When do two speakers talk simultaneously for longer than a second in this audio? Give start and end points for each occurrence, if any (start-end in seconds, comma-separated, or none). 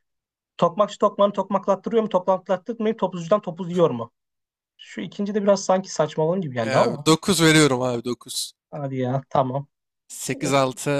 none